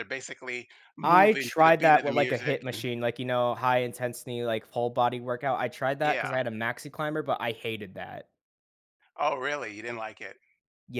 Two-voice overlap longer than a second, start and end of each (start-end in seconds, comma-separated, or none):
1.0-2.6